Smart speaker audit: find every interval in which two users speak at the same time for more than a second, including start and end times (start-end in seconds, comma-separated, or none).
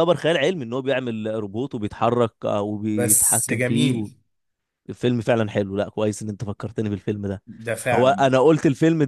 2.9-4.1